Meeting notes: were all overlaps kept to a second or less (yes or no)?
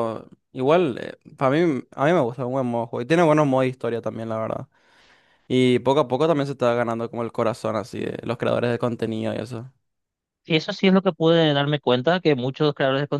yes